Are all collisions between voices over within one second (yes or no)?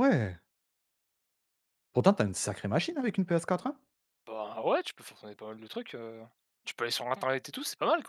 yes